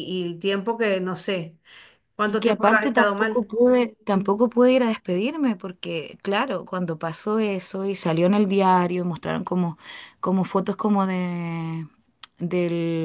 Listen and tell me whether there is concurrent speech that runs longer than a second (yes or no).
yes